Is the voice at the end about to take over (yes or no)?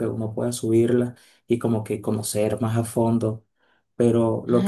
no